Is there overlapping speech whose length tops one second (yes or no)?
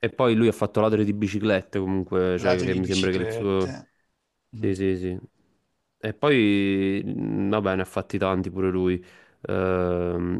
yes